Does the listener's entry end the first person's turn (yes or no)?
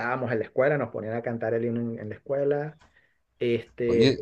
yes